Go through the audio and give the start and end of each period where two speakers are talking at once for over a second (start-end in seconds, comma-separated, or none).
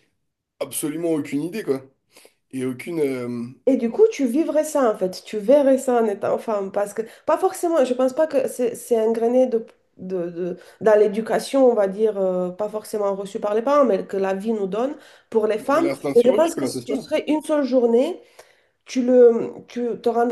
15.6-17.1